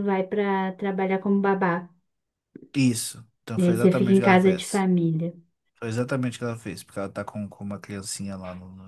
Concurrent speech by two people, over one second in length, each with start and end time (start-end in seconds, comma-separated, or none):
3.6-4.9